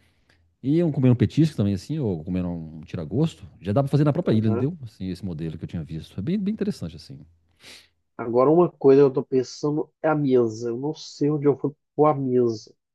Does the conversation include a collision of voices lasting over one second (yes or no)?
no